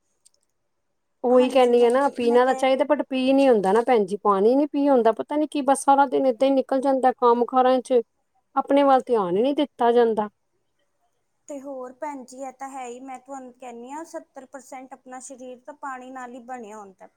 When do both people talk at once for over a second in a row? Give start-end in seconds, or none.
1.4-2.7